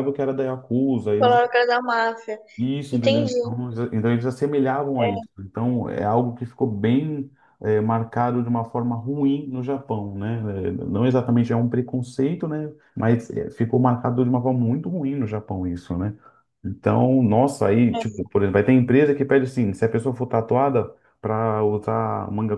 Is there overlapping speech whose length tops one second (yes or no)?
no